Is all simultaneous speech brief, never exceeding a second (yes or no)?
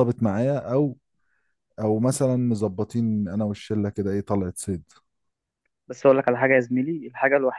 yes